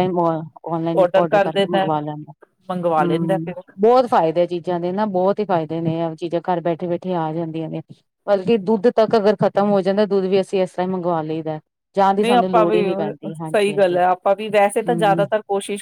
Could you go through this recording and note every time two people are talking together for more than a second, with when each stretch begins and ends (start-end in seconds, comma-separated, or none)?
12.2-14.0